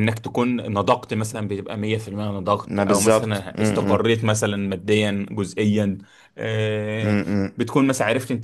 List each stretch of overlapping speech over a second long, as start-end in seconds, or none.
2.6-4.0